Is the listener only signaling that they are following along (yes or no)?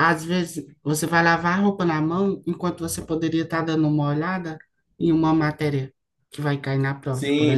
no